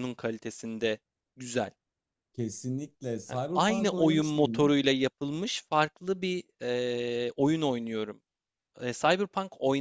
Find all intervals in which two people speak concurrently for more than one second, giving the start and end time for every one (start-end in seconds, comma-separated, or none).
3.3-4.7